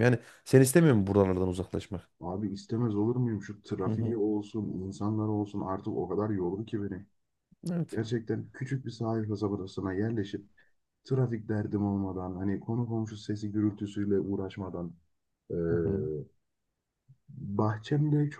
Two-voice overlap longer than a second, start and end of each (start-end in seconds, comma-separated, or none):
none